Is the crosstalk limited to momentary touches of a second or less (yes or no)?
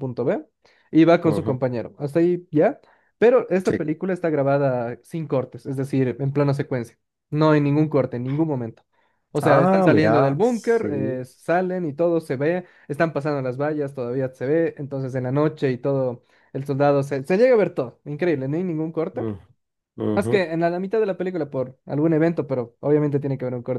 no